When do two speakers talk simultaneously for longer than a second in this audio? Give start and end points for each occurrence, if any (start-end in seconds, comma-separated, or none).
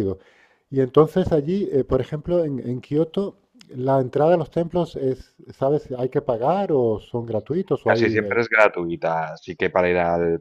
none